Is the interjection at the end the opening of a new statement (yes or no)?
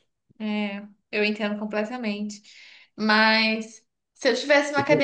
no